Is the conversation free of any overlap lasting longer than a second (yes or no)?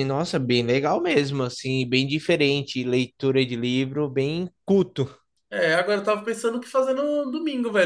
yes